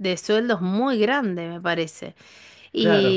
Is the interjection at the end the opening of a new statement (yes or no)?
yes